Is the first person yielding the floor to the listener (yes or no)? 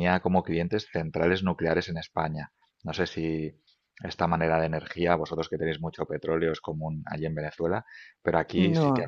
no